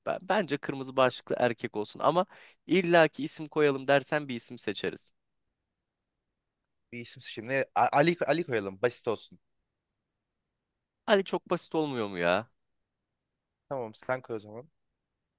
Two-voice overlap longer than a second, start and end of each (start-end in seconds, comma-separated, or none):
none